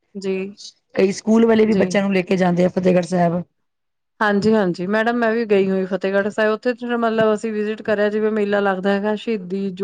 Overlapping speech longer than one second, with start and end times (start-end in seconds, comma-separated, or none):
none